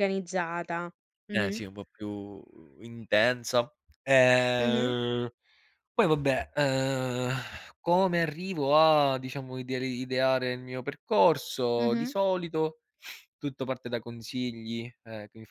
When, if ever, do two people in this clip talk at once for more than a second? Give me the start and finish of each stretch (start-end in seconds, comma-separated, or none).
none